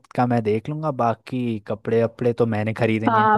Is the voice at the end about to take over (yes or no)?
yes